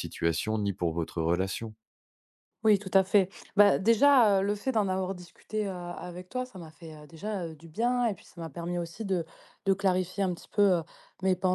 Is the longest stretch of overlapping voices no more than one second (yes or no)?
yes